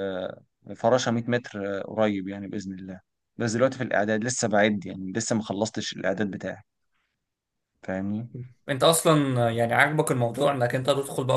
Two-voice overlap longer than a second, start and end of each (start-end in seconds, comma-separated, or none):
none